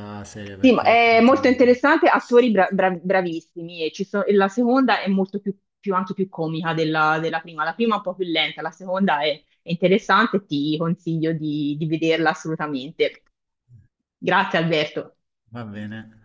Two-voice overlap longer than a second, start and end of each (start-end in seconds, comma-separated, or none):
none